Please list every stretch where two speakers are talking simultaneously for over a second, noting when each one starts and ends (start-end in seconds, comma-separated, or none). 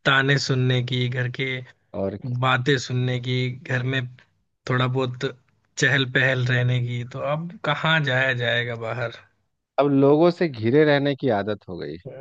none